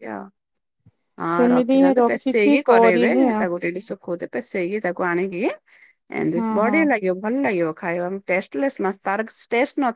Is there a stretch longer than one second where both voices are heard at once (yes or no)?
yes